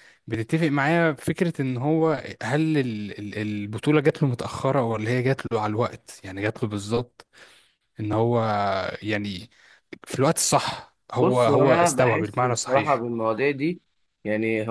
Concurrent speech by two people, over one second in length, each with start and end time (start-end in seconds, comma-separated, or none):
11.2-13.0